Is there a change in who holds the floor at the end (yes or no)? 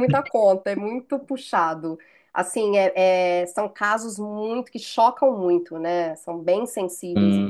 yes